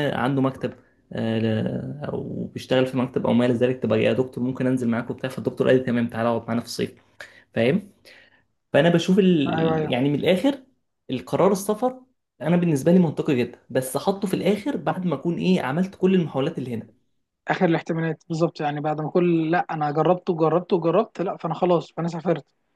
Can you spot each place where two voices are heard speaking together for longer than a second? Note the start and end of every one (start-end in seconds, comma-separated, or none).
none